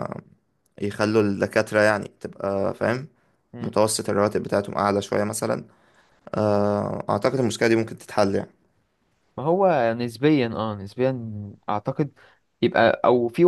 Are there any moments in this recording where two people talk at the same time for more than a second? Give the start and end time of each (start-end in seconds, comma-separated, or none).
none